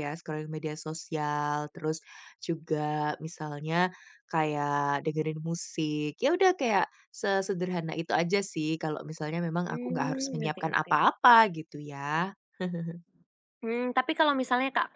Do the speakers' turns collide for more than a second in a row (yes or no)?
yes